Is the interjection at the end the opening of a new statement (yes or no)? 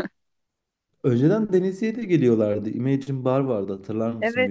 yes